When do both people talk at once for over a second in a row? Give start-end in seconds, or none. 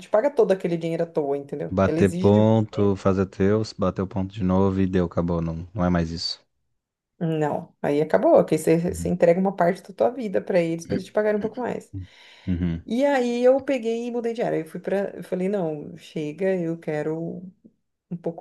1.7-2.9